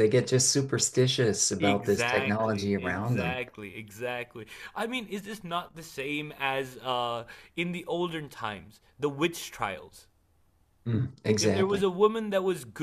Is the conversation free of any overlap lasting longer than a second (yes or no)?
no